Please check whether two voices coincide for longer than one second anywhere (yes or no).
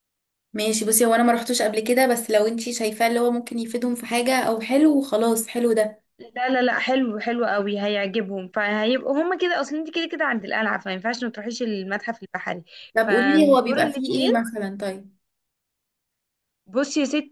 yes